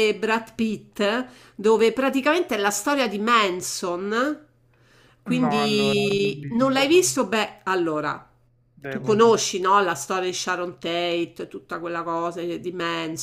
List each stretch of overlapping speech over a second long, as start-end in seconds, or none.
5.3-7.0